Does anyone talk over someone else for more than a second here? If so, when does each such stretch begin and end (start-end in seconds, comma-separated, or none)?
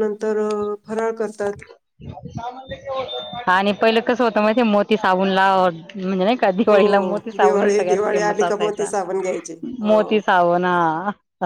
7.4-8.9